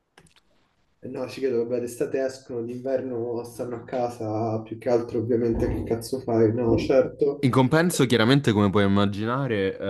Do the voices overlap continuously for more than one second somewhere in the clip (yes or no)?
no